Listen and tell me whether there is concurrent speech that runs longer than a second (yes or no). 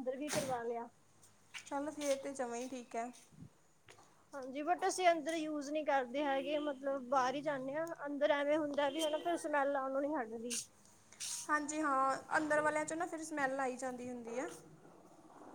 no